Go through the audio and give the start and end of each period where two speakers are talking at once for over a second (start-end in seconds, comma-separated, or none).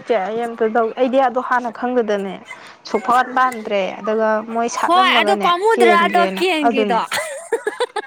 4.8-7.0